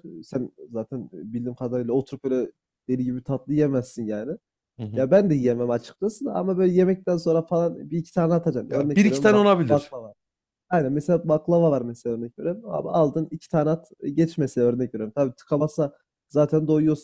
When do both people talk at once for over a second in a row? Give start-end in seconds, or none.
8.7-9.9